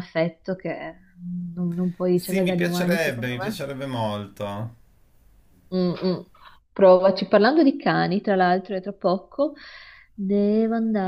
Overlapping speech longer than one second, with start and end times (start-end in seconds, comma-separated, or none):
2.1-3.6